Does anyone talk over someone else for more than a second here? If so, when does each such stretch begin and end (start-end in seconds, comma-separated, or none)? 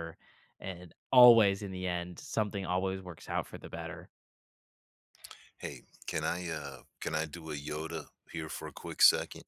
none